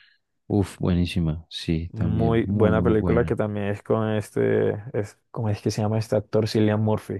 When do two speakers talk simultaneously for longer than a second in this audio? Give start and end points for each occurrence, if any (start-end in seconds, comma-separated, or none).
1.9-3.3